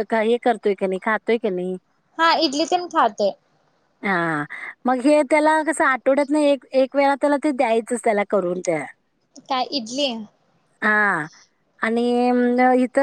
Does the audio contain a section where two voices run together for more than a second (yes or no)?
no